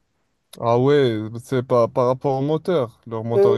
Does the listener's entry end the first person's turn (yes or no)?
yes